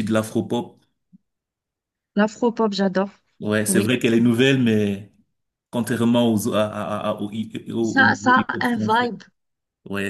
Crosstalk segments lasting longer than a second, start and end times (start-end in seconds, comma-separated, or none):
7.8-9.1